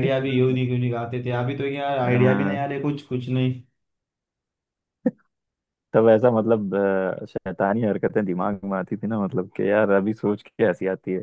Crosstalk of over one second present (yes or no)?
no